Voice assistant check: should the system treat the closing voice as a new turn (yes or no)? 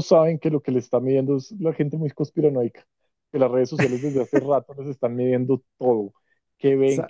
no